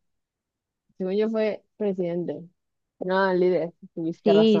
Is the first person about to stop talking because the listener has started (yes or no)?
yes